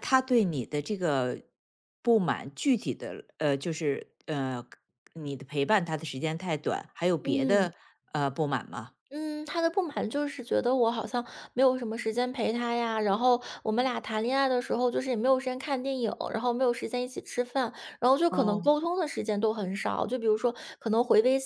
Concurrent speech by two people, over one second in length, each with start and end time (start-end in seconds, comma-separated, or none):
none